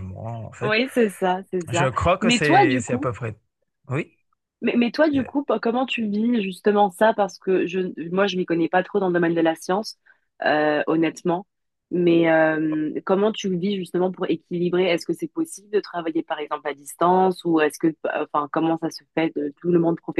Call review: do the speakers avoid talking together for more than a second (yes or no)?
no